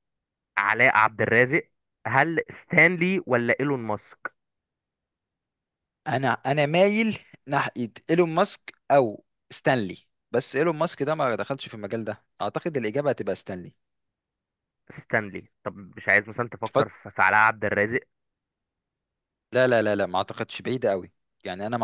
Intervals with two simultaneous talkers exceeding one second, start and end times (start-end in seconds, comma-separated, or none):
none